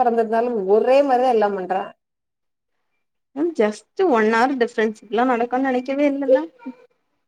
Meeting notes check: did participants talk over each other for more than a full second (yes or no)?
no